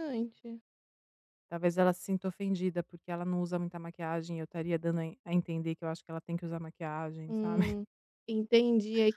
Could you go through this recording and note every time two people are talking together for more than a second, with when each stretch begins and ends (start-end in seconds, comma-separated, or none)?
none